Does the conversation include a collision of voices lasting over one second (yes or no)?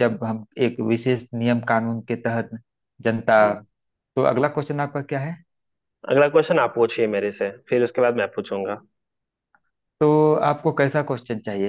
no